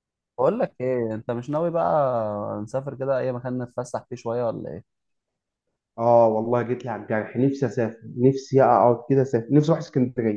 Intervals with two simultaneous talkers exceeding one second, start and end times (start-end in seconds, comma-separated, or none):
none